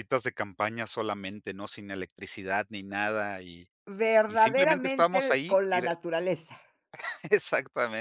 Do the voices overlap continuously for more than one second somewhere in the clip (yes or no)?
yes